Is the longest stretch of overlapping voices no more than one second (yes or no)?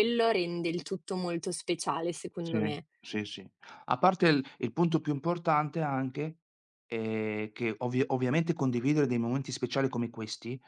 yes